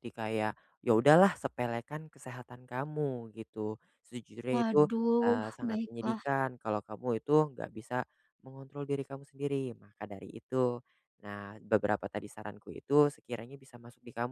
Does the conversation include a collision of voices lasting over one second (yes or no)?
yes